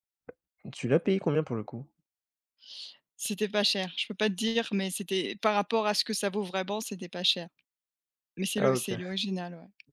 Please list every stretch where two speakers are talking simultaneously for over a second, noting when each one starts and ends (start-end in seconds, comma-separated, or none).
none